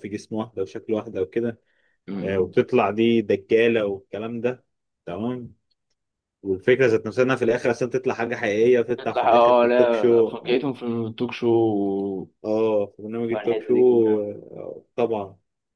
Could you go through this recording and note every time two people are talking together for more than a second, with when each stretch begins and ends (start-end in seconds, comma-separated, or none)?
9.0-10.3